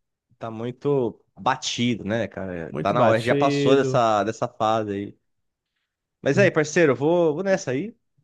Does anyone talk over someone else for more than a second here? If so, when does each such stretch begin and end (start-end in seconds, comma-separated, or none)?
2.7-4.0